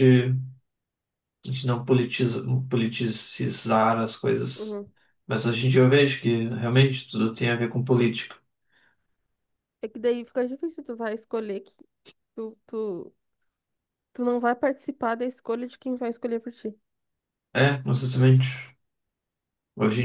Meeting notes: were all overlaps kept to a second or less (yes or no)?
yes